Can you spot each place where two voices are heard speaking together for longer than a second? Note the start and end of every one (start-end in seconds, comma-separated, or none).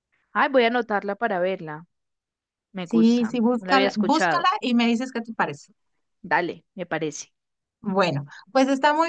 2.8-4.5